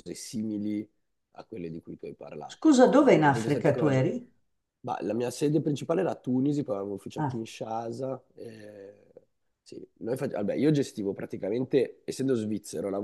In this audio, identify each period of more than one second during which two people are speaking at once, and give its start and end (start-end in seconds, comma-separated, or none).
2.5-4.1